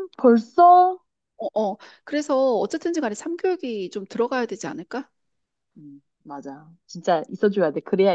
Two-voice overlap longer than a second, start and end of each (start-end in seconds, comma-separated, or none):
none